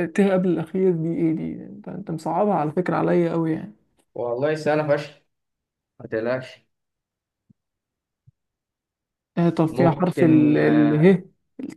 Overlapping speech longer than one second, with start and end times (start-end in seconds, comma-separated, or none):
9.7-11.2